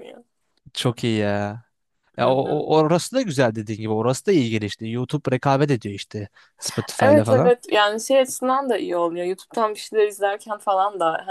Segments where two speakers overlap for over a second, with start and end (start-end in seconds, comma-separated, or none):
none